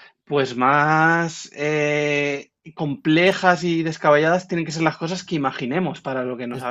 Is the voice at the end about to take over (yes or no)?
yes